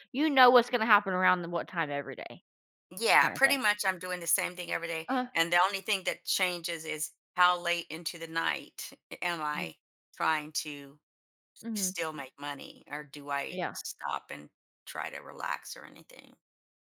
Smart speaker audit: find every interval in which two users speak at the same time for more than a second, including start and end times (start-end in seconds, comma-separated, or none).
none